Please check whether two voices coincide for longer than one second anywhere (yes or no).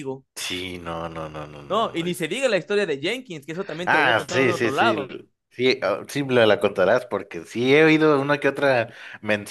yes